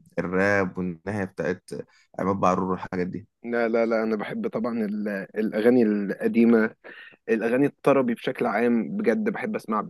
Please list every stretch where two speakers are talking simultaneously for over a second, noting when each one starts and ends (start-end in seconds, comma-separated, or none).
none